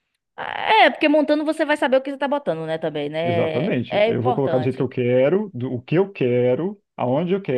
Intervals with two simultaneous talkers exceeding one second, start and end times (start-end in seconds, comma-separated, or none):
3.2-4.9